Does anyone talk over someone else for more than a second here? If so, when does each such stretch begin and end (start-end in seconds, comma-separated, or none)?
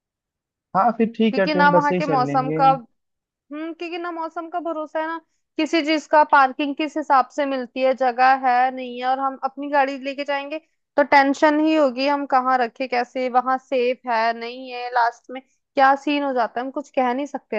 1.3-2.6